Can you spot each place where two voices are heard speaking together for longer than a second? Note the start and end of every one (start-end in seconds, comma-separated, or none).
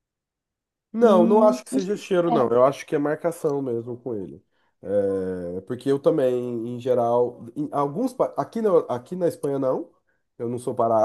1.0-2.5